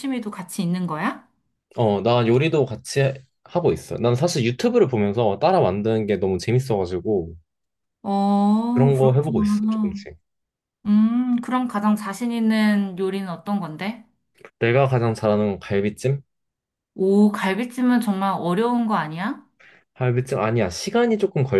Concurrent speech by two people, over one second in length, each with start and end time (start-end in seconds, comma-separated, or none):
8.7-10.0